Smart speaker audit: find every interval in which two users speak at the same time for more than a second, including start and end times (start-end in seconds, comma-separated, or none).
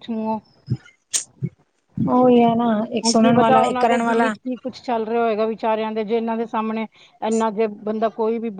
3.0-4.3